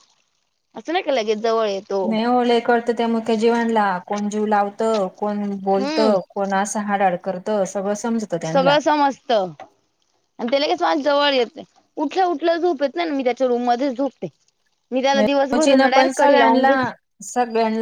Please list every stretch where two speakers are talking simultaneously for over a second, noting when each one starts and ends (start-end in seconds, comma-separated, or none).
15.5-16.7